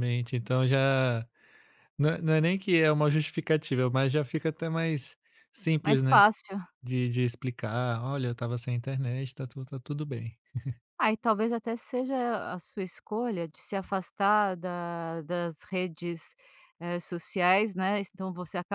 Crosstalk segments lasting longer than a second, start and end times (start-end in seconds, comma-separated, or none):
none